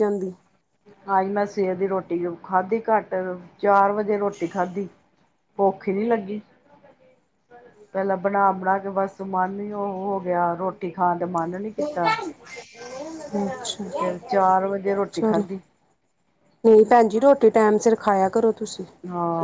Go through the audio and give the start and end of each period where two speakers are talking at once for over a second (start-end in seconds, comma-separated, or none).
none